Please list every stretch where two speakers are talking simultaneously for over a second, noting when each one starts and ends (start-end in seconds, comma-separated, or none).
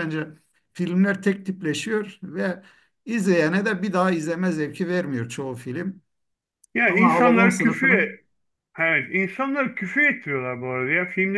6.9-8.1